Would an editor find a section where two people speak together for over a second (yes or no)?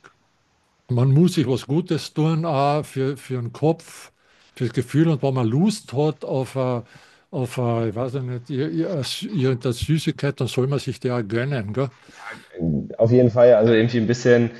no